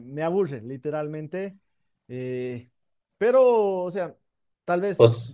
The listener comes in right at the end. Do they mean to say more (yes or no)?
no